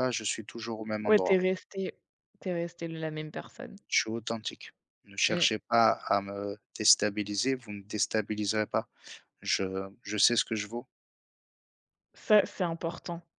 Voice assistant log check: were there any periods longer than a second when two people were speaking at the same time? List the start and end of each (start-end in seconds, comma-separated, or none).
none